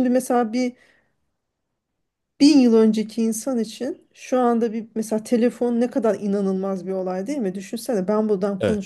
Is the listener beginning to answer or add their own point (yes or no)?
no